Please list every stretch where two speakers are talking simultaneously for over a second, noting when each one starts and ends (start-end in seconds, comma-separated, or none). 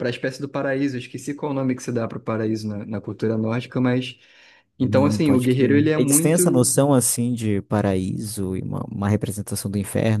4.8-6.7